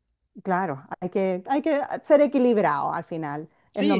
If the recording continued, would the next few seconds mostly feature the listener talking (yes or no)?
yes